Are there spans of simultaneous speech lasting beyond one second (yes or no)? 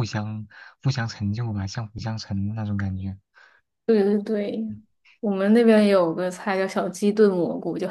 no